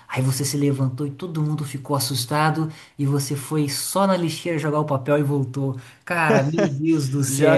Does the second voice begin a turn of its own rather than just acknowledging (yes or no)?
yes